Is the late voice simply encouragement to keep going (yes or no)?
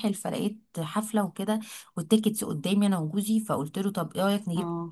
yes